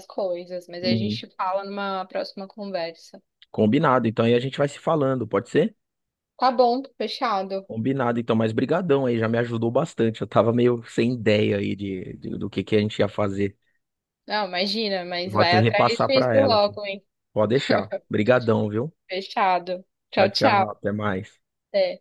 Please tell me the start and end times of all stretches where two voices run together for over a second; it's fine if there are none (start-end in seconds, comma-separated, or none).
15.2-16.6